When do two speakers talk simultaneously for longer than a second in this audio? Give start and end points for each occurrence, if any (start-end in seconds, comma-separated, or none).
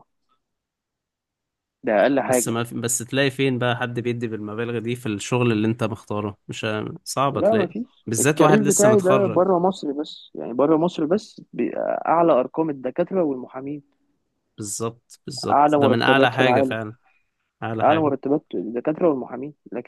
7.3-9.4, 15.5-16.8